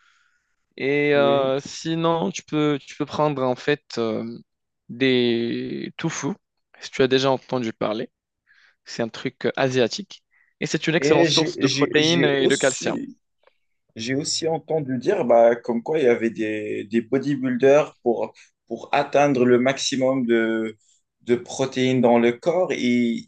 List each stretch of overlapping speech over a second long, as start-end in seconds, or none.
11.0-13.0